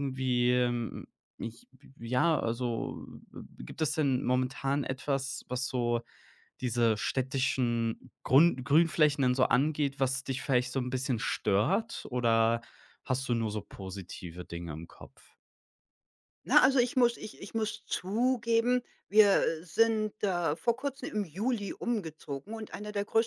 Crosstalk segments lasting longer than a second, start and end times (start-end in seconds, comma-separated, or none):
none